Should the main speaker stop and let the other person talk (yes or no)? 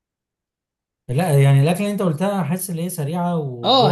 yes